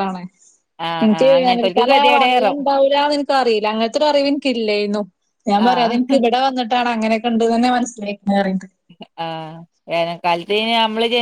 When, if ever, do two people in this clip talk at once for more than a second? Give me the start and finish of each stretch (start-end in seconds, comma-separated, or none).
1.0-2.6